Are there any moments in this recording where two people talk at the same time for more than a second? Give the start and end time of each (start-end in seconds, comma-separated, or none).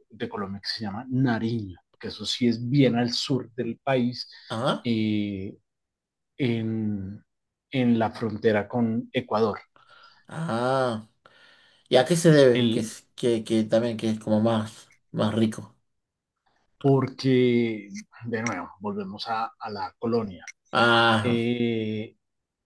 none